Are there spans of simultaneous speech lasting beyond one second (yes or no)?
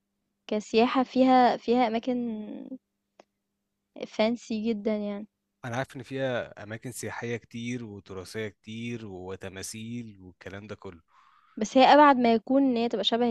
no